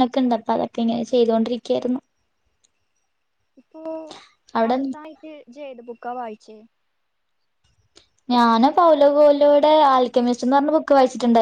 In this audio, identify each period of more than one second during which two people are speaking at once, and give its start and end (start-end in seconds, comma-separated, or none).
none